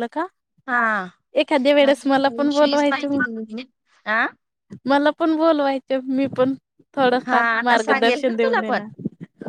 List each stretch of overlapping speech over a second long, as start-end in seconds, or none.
1.8-3.2, 7.3-8.8